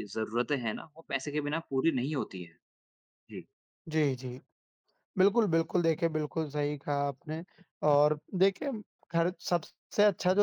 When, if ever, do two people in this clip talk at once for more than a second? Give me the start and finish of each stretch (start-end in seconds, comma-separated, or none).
none